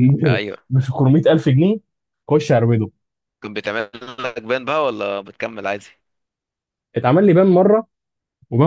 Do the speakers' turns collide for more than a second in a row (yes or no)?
no